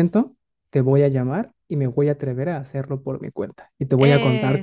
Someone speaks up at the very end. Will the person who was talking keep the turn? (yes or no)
yes